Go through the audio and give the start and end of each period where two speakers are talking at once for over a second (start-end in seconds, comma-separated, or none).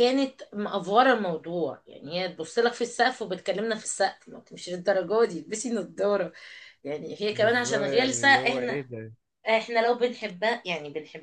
7.3-8.8